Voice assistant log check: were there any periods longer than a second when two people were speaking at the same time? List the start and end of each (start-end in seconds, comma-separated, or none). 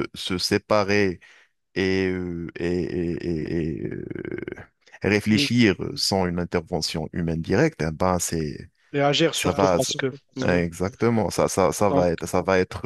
9.3-10.6